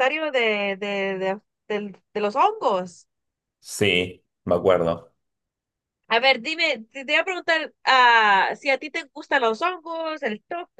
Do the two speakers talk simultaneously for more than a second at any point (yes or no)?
no